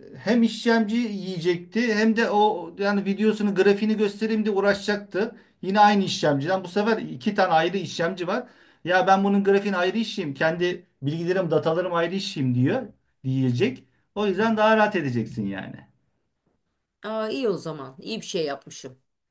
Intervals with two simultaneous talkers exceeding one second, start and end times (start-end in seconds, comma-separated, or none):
none